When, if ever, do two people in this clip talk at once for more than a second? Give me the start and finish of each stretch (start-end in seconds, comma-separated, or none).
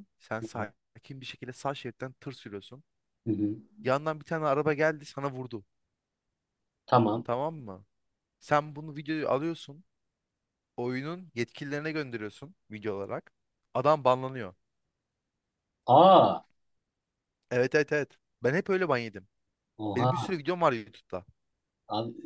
none